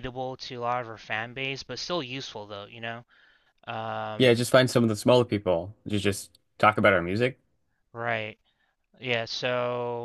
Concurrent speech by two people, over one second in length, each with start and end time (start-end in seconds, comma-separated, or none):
none